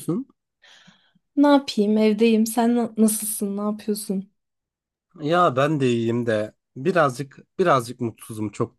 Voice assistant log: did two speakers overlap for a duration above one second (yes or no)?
no